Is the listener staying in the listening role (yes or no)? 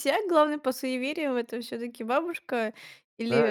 no